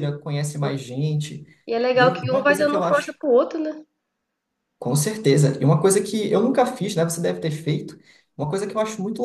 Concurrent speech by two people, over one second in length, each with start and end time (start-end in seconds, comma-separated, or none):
1.9-3.2